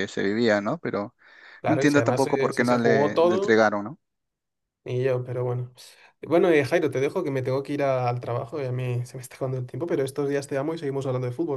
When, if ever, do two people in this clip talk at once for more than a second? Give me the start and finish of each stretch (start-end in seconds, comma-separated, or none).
1.7-3.6